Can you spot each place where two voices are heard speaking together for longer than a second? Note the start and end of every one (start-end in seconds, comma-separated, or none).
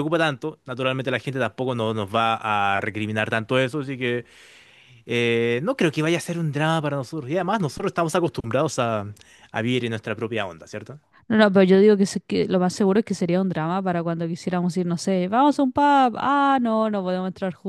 none